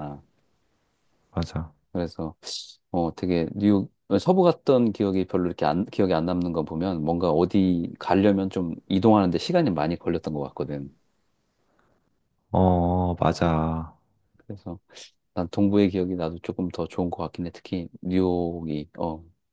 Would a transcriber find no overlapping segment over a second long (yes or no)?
yes